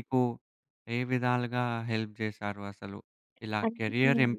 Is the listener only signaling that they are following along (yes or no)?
yes